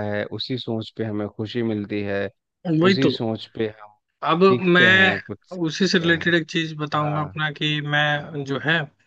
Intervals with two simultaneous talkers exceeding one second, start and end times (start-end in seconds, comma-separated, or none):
4.5-6.3